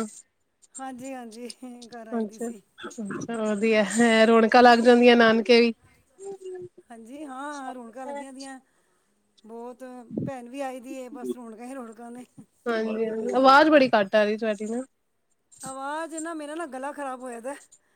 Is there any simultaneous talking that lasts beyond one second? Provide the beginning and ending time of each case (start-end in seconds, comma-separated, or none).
none